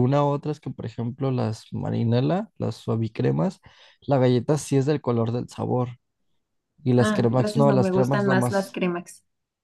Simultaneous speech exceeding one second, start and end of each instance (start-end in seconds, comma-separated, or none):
7.0-8.8